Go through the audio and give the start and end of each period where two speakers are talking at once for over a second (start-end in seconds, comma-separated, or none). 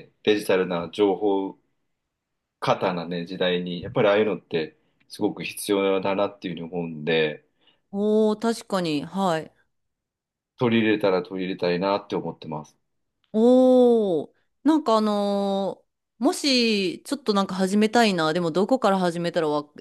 none